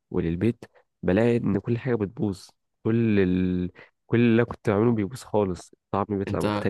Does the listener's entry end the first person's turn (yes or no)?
yes